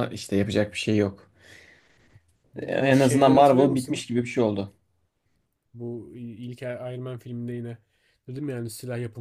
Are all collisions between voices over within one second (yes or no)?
no